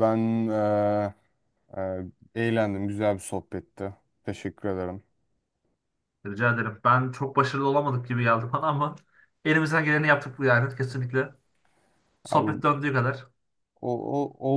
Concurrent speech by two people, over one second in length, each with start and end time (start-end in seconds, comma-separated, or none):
none